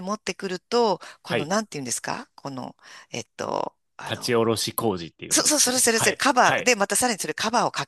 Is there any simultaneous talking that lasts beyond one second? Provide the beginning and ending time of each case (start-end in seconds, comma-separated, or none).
5.3-6.7